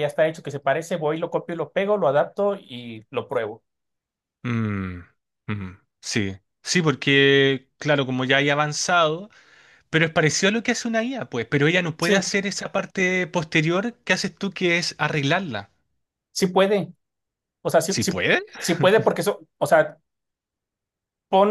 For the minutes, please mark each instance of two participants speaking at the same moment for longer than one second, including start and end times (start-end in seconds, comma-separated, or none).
none